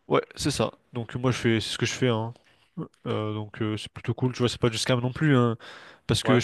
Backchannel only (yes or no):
yes